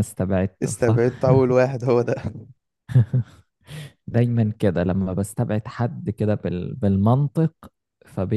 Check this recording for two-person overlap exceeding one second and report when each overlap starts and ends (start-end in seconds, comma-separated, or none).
none